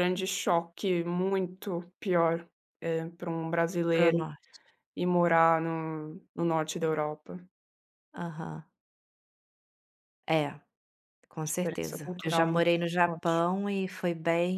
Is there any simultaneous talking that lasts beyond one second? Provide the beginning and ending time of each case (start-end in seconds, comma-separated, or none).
11.3-13.4